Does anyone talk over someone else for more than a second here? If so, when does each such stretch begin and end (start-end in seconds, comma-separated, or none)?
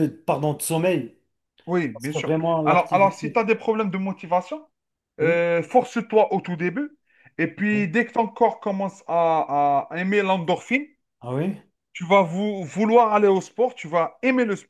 1.9-3.4